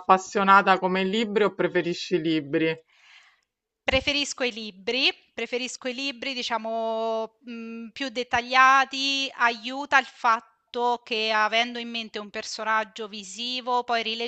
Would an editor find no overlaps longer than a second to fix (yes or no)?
yes